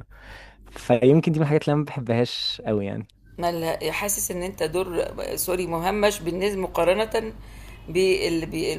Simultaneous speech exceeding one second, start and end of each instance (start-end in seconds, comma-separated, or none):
none